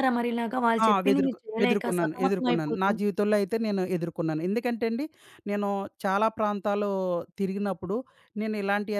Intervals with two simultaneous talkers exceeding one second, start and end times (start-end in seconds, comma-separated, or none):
0.8-2.9